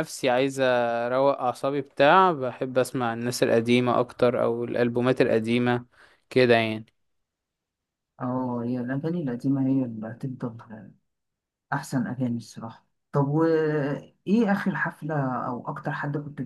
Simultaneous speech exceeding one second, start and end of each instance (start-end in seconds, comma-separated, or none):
none